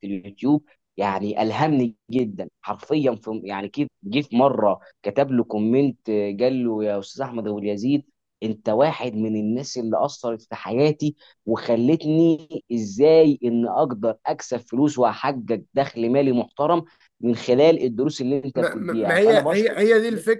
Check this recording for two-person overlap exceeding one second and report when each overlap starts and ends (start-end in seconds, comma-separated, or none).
18.5-19.8